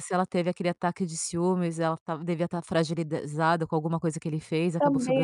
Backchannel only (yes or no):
no